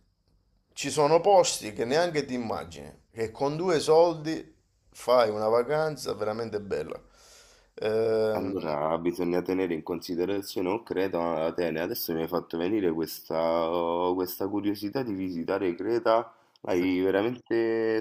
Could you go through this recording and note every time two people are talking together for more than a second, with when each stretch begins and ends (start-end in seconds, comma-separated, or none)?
none